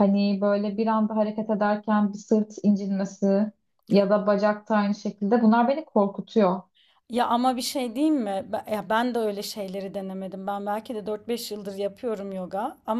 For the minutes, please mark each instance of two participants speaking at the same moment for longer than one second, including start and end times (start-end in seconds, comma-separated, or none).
none